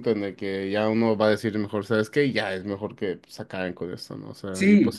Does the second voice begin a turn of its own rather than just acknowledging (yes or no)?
no